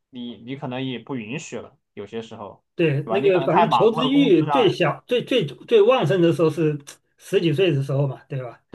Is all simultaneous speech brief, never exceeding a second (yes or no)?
no